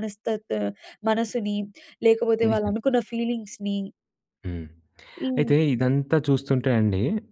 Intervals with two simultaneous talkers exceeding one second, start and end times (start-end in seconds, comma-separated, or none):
none